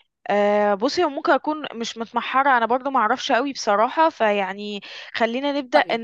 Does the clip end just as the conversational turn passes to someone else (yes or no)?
yes